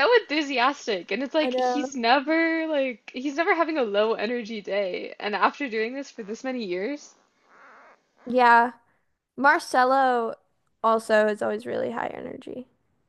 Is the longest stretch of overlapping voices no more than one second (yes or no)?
yes